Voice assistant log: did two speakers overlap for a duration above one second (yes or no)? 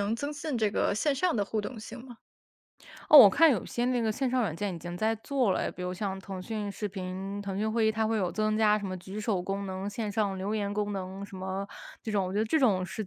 no